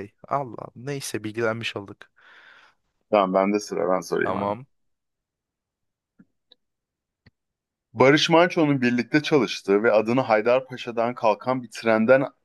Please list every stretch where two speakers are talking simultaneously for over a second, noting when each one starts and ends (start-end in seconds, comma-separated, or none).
none